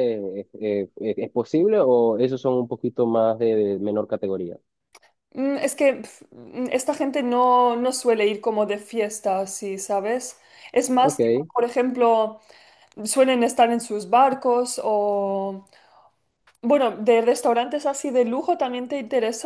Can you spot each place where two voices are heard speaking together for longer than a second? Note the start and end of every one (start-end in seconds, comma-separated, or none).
none